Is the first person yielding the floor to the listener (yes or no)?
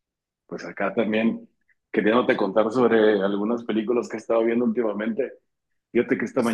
no